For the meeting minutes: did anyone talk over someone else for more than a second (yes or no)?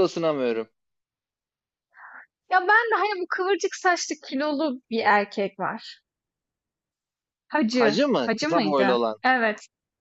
yes